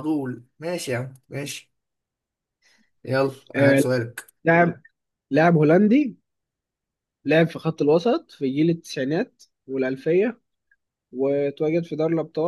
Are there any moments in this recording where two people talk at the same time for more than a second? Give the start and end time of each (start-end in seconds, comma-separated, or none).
none